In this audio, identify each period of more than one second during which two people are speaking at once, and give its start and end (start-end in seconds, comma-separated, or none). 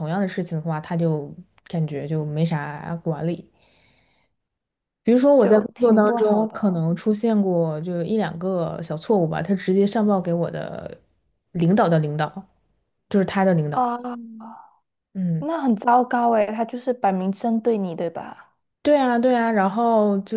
5.4-6.8